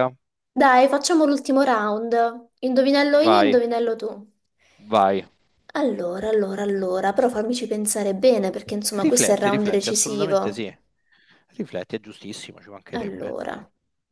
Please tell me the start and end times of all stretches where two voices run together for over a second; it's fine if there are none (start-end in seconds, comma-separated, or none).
8.9-10.6